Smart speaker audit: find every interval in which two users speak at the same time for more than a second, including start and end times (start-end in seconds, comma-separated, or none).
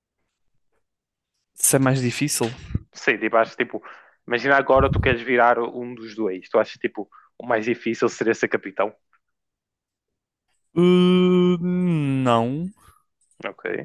none